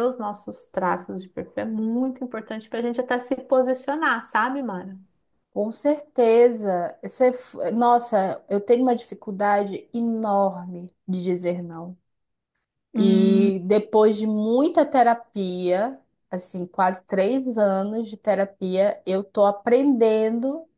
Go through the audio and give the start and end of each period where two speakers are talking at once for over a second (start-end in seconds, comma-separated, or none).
none